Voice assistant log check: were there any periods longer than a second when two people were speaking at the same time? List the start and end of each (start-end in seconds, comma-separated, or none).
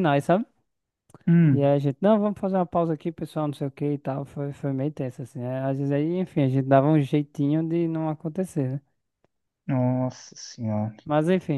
none